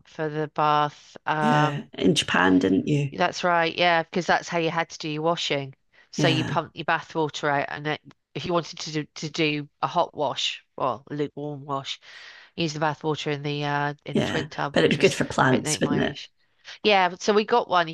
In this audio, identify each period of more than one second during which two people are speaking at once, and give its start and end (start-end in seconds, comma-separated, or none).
14.1-16.2